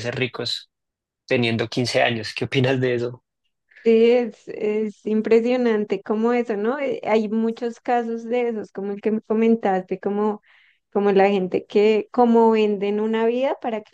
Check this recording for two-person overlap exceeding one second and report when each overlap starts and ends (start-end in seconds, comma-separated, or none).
none